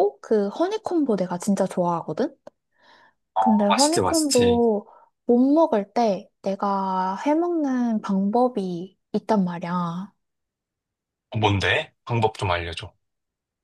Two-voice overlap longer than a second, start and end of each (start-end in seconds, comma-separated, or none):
3.4-4.6